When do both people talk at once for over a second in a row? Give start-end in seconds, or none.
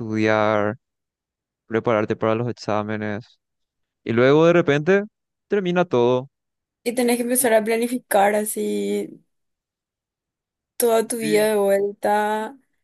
none